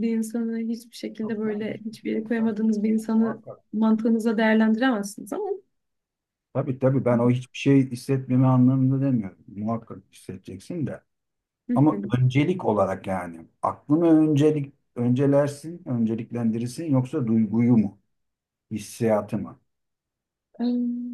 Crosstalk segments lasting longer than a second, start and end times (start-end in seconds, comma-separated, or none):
1.2-3.6